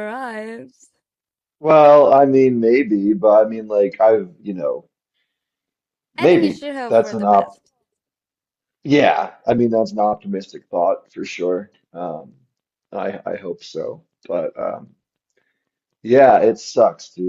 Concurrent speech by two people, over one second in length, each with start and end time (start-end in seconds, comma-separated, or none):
6.2-7.6